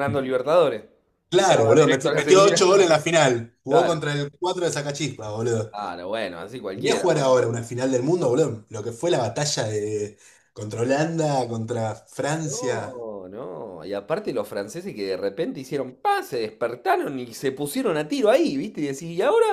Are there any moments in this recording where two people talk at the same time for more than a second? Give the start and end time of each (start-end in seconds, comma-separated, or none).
1.4-2.6